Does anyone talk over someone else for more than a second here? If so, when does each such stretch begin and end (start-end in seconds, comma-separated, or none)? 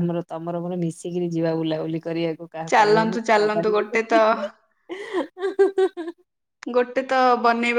2.7-4.2